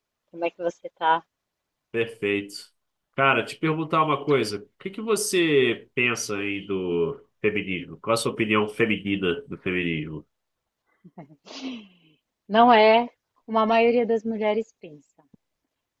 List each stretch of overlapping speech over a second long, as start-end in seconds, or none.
none